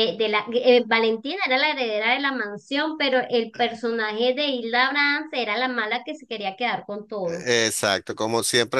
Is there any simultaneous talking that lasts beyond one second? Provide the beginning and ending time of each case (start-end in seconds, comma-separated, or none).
none